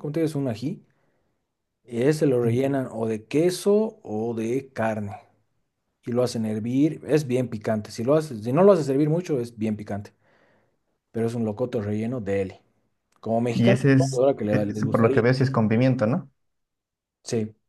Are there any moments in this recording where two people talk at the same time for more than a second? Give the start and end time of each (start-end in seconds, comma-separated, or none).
13.5-15.2